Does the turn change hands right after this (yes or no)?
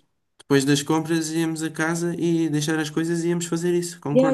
yes